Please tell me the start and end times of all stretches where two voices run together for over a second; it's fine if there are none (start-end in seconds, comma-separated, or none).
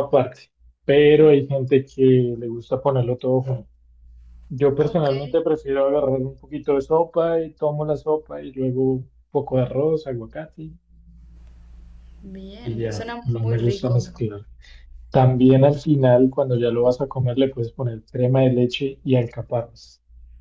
12.6-14.1